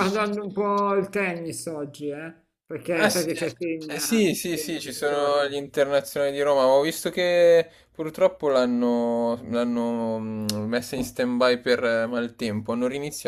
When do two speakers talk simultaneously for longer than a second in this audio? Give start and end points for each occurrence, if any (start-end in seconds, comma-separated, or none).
2.9-5.5